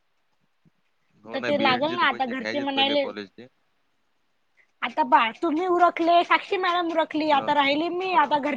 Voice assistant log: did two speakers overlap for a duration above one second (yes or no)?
yes